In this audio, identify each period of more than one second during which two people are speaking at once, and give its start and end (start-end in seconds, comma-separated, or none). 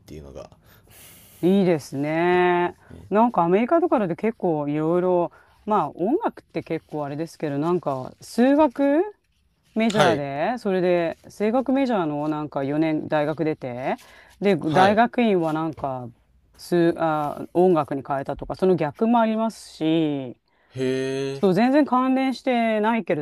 none